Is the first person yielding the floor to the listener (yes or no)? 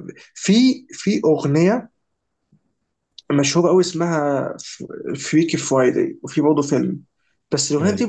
no